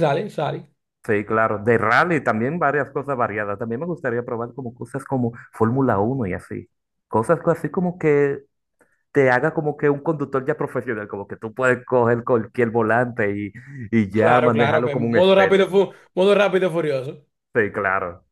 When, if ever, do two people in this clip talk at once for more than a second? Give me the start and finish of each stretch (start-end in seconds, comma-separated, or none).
14.1-15.8